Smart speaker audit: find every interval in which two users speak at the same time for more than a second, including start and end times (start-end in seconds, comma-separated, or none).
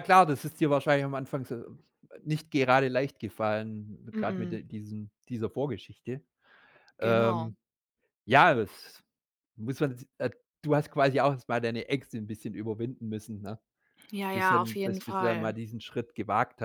14.3-15.6